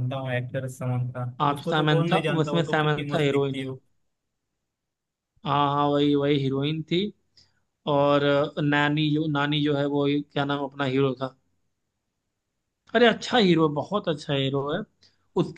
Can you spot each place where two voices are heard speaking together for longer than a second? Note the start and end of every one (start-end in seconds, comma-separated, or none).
1.4-3.7